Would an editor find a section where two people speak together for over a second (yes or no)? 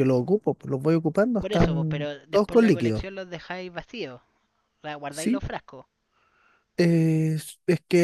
yes